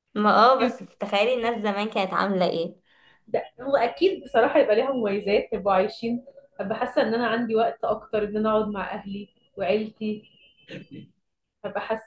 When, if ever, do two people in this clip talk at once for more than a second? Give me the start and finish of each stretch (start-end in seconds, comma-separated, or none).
none